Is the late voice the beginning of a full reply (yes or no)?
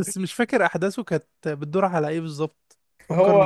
yes